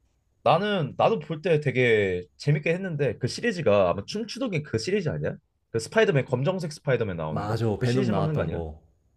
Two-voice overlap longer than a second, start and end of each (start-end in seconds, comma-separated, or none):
7.3-8.6